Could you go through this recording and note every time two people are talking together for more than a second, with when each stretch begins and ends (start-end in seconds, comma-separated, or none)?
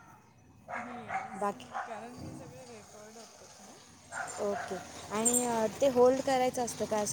none